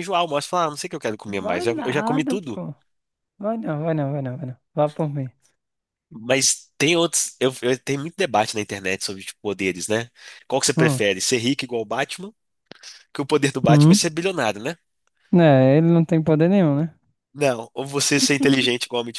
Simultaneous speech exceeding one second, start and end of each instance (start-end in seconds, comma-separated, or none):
1.3-2.6